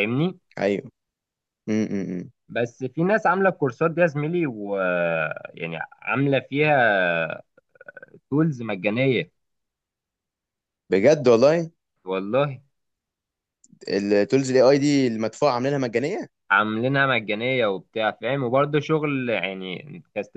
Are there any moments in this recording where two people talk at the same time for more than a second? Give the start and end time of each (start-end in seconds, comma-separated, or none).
none